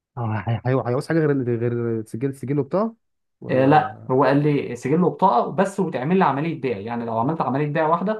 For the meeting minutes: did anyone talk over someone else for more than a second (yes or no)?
no